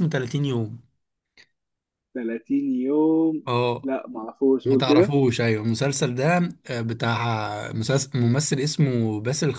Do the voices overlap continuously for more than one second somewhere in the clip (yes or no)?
no